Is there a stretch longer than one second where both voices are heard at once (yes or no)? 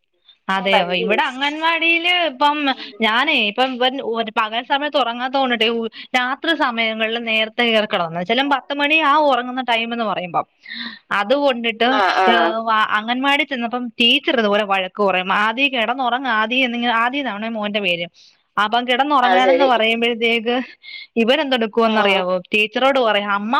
no